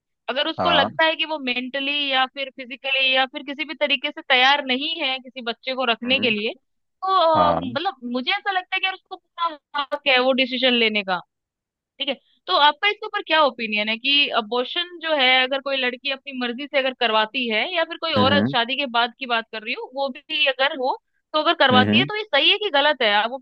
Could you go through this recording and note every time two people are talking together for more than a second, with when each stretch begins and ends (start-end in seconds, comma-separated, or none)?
none